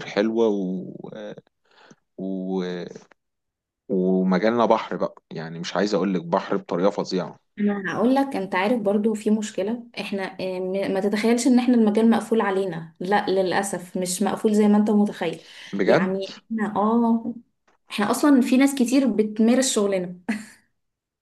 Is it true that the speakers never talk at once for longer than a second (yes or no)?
yes